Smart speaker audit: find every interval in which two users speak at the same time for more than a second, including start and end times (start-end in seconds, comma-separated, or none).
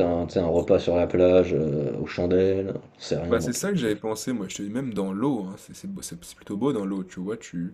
none